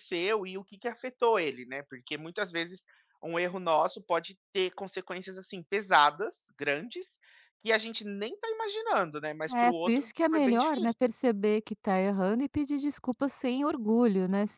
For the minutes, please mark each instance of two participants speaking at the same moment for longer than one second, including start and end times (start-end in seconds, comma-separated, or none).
9.5-11.1